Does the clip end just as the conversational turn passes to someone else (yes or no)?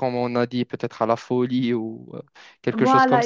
yes